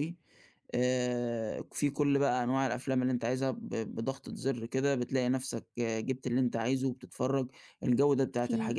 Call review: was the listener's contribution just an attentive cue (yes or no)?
yes